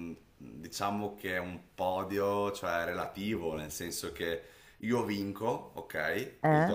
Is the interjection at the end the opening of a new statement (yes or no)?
no